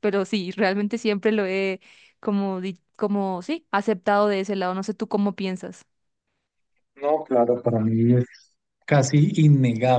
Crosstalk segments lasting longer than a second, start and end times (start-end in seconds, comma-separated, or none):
none